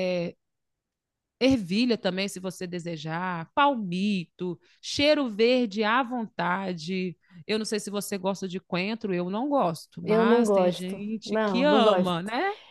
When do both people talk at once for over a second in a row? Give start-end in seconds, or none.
10.0-12.2